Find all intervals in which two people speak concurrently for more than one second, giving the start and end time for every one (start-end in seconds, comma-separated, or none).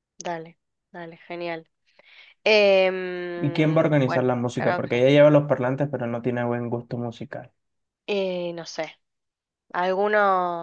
3.4-4.9